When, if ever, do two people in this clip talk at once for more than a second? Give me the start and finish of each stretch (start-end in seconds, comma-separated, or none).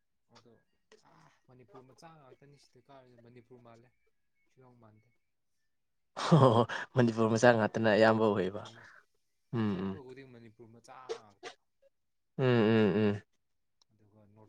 none